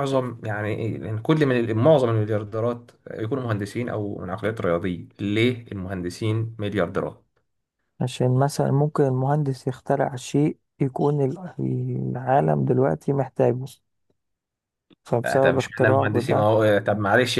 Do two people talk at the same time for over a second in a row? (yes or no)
yes